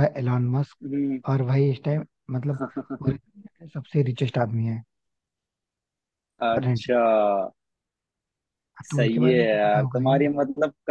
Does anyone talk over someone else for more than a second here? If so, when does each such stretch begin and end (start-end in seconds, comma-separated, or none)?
8.9-10.3